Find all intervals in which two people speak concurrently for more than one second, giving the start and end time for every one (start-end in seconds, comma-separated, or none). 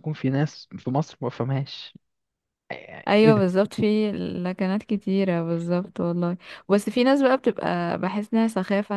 none